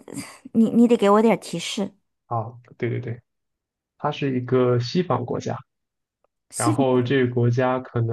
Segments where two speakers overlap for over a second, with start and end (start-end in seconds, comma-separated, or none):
none